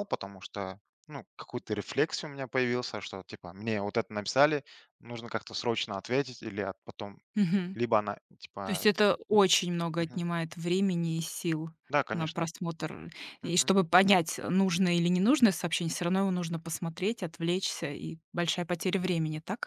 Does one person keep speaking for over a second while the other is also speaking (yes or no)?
no